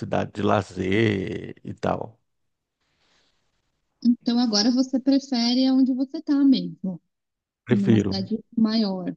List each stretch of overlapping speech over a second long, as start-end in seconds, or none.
none